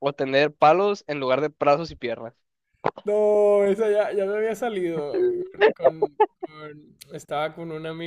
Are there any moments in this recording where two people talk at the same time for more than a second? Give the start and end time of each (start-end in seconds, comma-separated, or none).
none